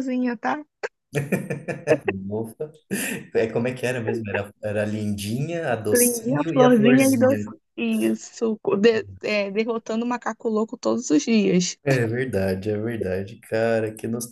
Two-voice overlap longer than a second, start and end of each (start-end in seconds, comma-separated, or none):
5.9-7.4